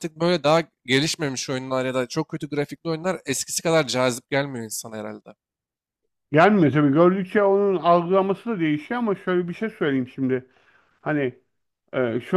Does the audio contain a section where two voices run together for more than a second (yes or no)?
no